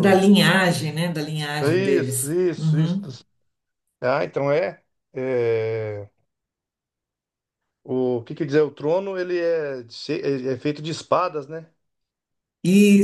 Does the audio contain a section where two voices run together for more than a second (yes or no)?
yes